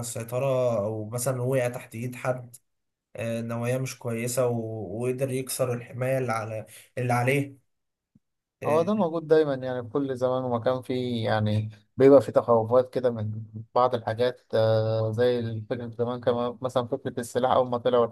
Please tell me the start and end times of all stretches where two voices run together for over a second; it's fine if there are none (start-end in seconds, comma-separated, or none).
none